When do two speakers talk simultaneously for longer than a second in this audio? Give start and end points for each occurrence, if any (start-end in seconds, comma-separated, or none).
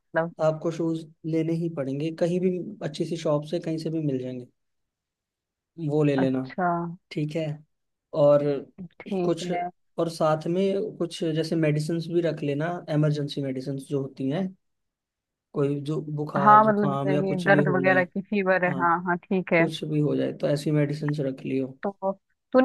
16.4-18.0